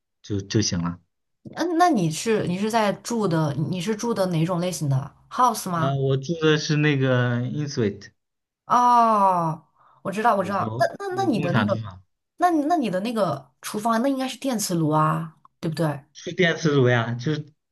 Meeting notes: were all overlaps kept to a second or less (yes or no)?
no